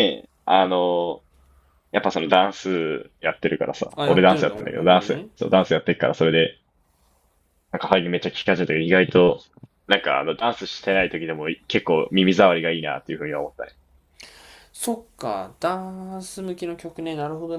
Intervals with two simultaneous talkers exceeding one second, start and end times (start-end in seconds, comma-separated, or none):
4.0-5.3